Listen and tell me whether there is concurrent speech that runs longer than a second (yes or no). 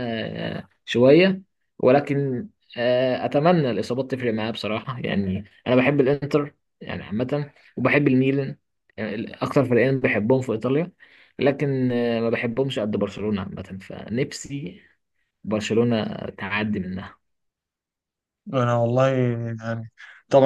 no